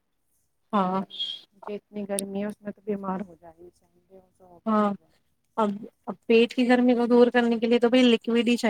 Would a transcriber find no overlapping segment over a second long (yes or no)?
yes